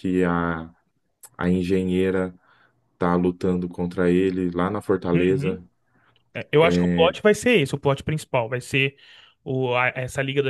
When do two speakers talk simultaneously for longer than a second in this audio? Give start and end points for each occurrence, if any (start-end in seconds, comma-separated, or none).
none